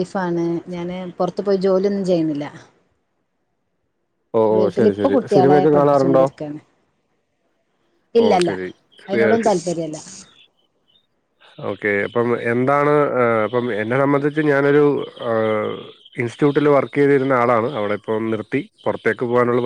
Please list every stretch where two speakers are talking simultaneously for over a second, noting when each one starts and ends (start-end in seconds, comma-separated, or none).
4.5-6.2